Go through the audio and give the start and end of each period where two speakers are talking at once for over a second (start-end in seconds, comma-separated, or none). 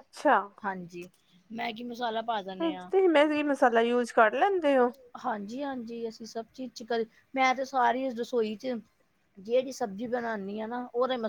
none